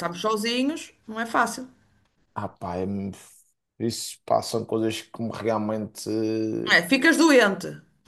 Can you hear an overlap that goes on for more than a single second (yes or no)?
no